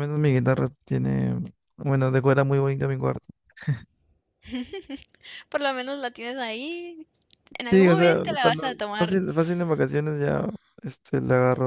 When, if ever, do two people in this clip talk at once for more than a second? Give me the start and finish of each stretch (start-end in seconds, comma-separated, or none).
7.6-9.2